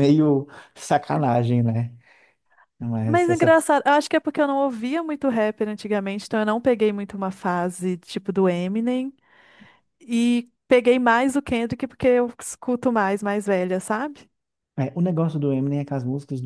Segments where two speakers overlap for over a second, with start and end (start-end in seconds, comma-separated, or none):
none